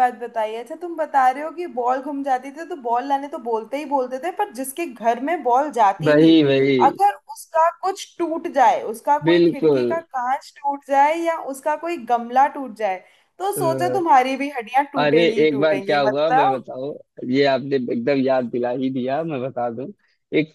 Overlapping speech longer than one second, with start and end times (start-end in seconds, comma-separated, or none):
15.0-16.6